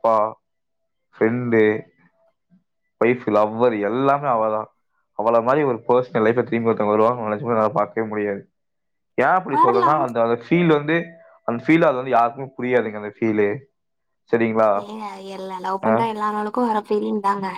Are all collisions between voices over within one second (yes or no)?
yes